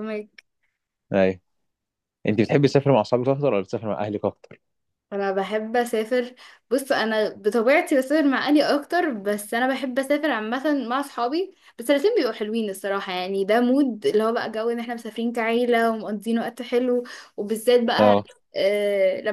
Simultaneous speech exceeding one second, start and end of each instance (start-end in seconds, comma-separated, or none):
none